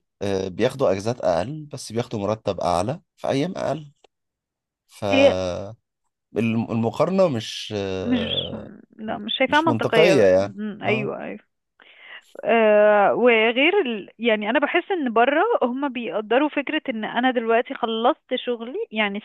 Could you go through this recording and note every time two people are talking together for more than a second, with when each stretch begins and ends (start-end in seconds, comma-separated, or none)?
9.5-11.1